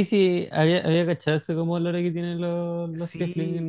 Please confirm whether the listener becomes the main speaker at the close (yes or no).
no